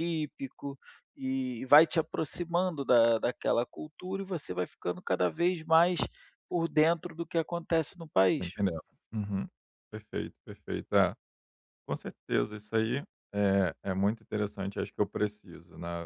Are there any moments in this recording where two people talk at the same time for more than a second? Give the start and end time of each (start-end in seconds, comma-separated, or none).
none